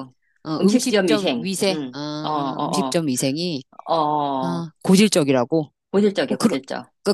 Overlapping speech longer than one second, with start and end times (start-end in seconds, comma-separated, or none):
0.6-3.0